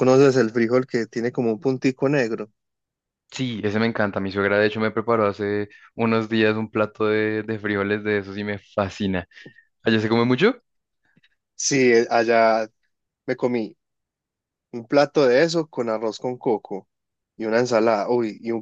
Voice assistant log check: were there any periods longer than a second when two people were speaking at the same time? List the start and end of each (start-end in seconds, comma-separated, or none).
none